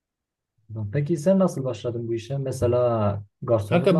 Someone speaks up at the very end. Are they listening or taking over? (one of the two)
taking over